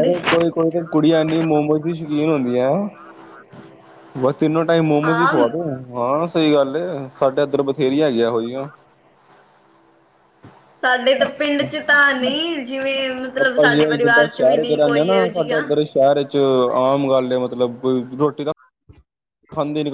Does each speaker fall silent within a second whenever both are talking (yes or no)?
no